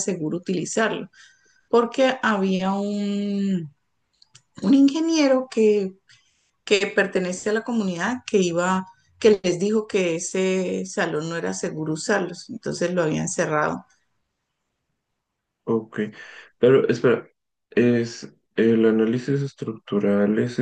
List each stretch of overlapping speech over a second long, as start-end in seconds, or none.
none